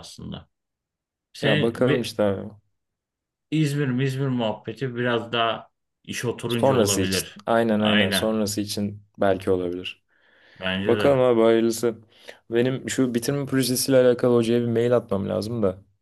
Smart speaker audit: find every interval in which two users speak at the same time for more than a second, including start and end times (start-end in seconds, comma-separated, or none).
6.5-8.4